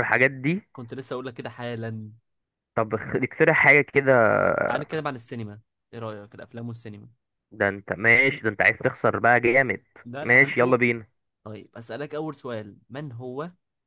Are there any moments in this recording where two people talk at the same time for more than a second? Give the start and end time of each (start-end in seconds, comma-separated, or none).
none